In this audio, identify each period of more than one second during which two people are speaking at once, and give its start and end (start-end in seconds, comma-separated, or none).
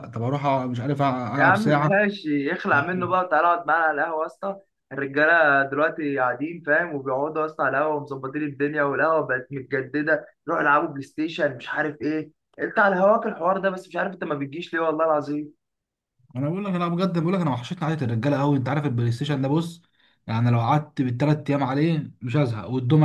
none